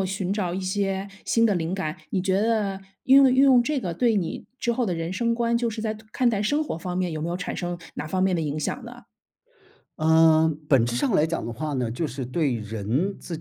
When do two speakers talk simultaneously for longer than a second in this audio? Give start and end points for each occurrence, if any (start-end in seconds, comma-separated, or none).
none